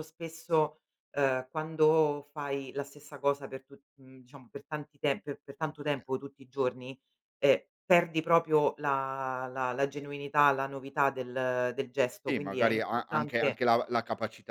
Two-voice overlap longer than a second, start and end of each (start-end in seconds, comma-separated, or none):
12.3-13.6